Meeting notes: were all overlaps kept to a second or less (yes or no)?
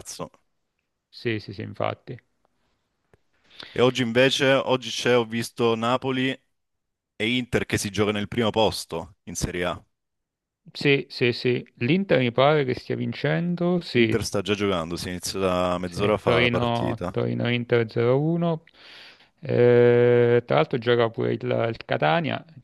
no